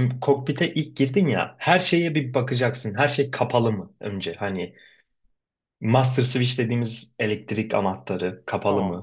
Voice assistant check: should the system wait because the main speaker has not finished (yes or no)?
yes